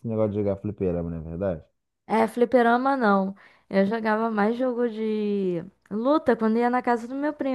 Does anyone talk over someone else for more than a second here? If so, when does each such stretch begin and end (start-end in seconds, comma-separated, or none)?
none